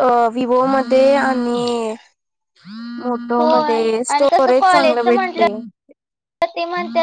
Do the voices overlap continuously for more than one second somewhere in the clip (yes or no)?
yes